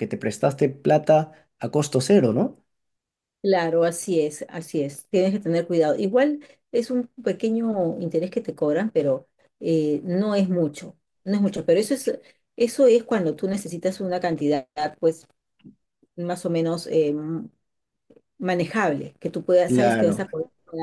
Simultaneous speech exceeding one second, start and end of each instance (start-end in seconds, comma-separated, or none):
none